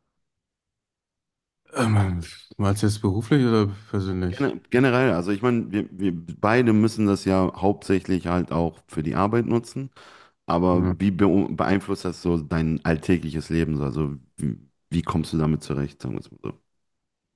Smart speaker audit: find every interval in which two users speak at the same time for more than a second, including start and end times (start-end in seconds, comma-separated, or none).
none